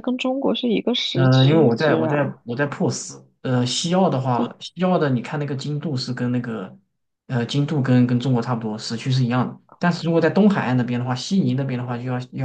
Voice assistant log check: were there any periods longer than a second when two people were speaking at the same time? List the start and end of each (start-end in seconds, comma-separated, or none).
1.1-2.3